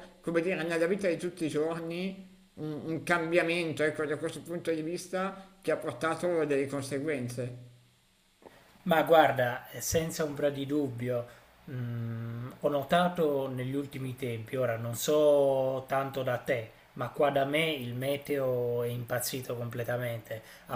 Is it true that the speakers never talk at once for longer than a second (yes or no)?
yes